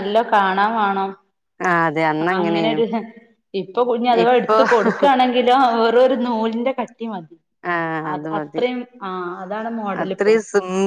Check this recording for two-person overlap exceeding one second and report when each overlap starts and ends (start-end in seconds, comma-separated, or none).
none